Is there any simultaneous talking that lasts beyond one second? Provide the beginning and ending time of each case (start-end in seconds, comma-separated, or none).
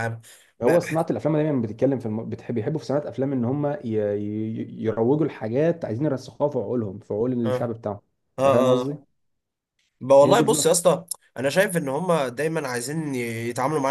none